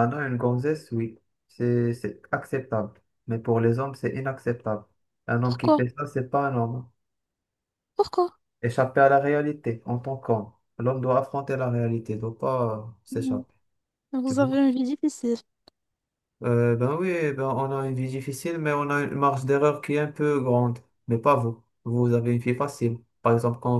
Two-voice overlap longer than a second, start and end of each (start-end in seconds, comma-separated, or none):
none